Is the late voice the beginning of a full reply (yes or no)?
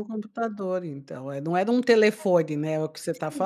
yes